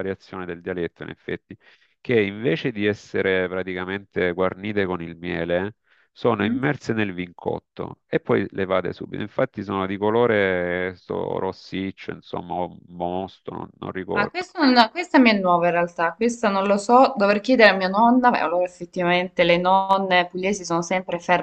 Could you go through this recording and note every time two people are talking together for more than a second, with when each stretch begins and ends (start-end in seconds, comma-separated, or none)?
none